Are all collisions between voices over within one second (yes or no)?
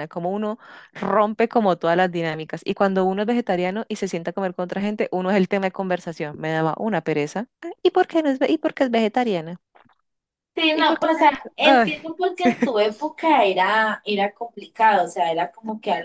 no